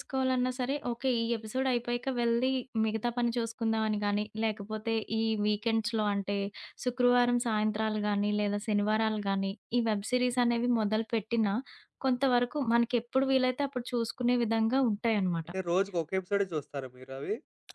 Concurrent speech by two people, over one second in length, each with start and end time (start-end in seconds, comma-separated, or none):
none